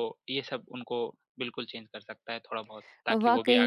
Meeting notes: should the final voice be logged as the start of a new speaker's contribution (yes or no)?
yes